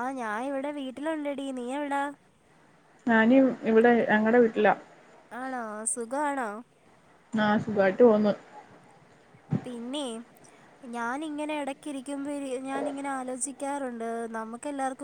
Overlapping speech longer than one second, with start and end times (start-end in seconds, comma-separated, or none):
none